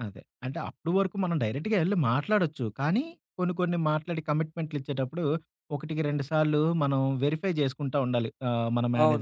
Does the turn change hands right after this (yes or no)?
yes